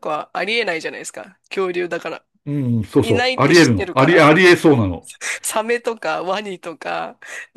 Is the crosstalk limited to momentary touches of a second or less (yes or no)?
no